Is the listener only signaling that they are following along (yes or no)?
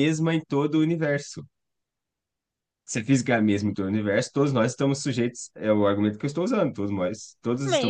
no